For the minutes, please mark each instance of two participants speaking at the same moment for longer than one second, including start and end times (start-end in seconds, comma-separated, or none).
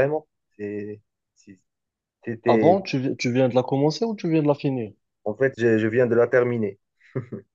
none